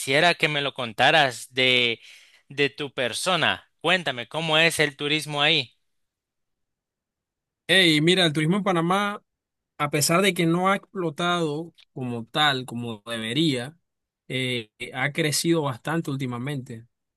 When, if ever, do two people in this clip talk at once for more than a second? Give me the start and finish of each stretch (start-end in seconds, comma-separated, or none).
none